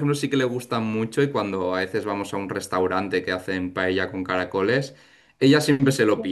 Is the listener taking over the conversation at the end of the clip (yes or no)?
no